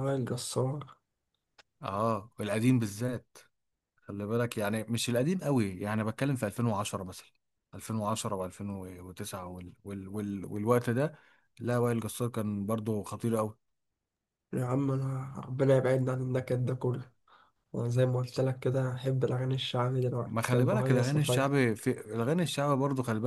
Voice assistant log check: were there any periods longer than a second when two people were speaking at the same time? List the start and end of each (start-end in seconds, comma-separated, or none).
20.2-21.5